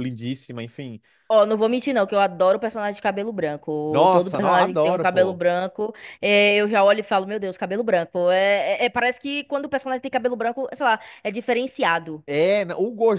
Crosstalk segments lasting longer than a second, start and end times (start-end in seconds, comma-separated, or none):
3.9-5.4